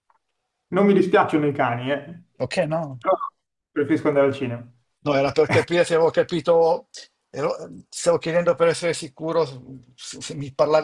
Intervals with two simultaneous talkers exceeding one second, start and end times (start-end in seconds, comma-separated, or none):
none